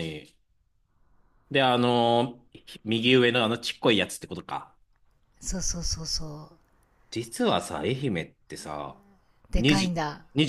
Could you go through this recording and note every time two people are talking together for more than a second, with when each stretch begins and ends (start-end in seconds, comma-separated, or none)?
none